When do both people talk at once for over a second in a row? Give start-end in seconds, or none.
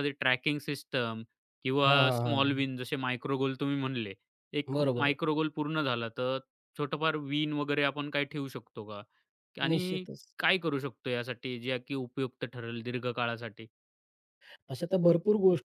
none